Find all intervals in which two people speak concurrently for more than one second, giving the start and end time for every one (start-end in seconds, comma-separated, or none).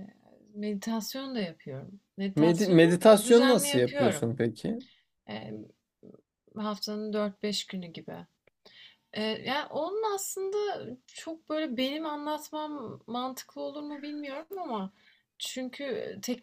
2.4-4.3